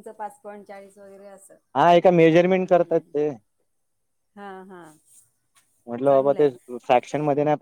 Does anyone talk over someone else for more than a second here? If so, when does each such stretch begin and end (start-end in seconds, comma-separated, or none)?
none